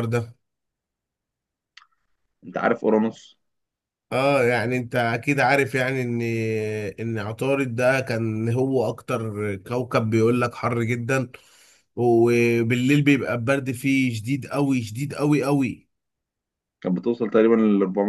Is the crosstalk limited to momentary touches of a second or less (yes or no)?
yes